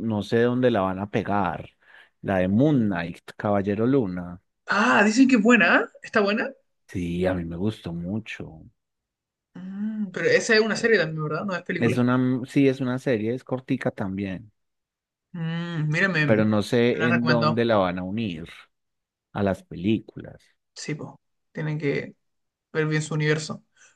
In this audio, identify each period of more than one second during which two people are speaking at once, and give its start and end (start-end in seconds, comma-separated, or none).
16.2-17.6